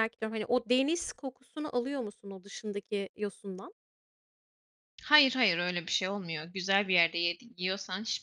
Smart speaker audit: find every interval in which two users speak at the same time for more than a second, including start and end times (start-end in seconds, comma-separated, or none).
none